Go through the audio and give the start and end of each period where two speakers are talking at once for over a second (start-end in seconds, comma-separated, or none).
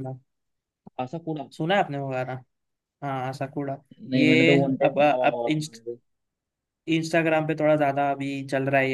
4.1-5.8